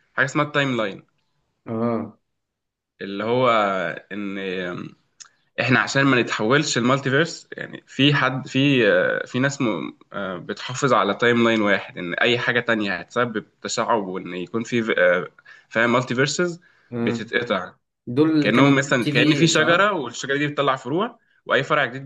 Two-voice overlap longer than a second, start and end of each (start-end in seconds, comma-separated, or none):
18.4-20.0